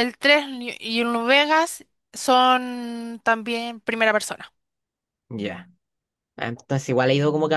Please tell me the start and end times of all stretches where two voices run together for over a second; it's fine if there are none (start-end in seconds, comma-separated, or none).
none